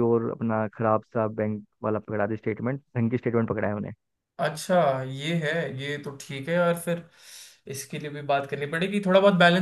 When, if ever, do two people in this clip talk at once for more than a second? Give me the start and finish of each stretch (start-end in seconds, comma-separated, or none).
none